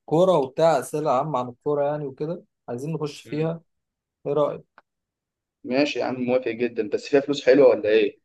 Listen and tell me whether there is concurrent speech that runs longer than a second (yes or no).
no